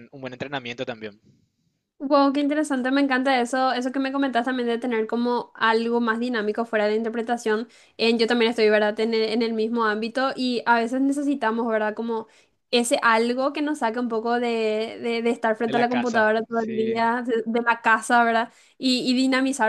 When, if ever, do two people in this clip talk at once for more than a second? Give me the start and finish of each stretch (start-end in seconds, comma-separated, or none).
15.7-17.0